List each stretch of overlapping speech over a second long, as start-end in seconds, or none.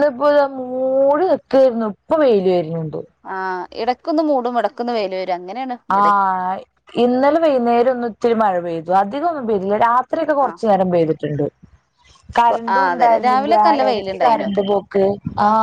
12.5-14.5